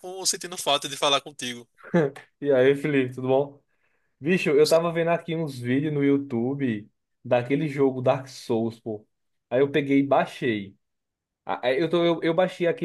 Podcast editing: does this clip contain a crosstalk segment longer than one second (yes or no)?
no